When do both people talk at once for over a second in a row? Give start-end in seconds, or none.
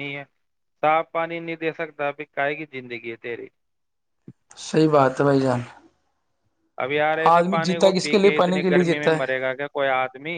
7.3-9.2